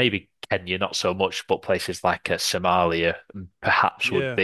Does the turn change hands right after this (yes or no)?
no